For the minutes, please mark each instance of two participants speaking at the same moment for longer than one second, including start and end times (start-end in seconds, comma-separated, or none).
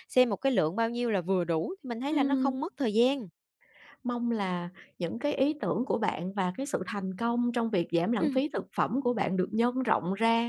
none